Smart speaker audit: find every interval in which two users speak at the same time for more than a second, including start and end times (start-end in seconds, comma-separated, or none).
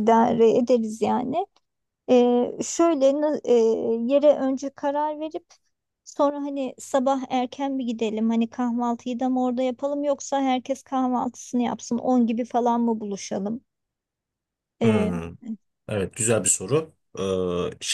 none